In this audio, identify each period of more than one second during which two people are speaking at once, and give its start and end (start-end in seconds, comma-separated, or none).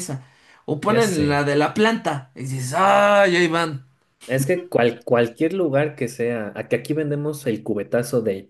none